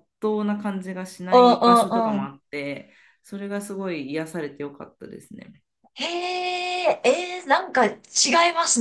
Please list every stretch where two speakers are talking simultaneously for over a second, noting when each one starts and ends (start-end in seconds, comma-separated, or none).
none